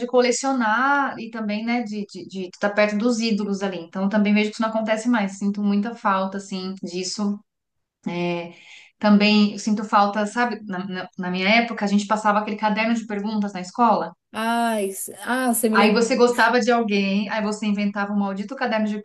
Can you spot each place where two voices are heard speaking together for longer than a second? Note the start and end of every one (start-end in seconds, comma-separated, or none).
none